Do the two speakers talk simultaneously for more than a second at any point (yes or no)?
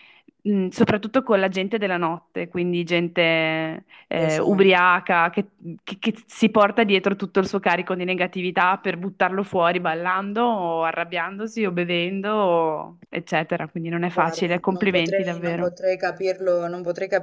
yes